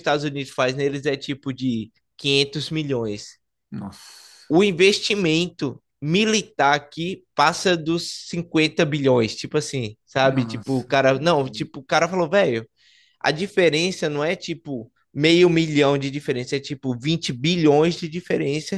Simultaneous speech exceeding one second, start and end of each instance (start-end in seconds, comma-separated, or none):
10.2-11.7